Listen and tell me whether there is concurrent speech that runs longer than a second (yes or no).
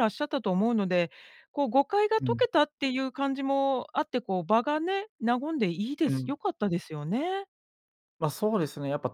no